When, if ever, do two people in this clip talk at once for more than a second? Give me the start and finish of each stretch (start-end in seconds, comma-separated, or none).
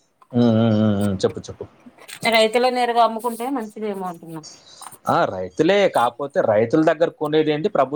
none